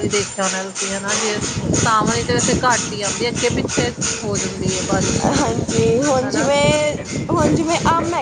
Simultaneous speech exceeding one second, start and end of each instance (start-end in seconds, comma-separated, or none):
none